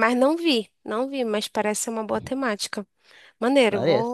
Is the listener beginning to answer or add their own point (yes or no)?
no